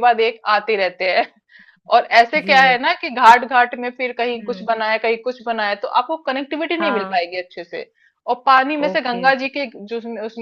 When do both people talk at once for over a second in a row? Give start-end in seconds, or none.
none